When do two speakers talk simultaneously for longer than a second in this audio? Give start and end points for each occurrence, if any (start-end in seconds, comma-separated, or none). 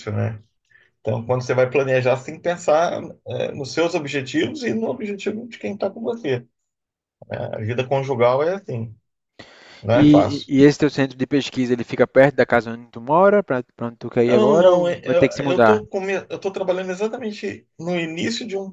14.2-15.8